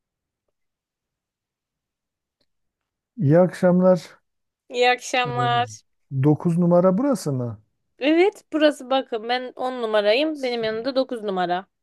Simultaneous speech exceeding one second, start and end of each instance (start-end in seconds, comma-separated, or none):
none